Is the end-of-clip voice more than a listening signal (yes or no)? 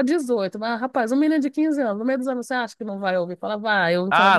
yes